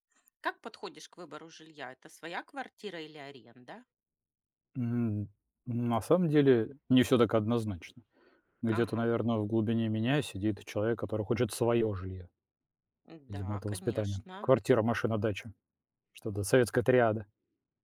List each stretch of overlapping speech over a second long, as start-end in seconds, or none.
13.3-14.5